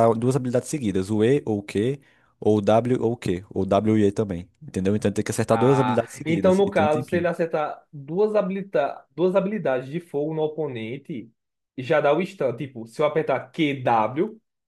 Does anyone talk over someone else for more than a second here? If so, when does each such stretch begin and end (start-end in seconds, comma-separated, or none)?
5.5-7.3